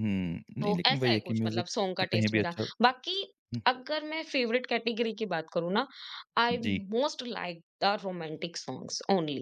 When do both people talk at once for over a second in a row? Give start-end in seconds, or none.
0.6-2.9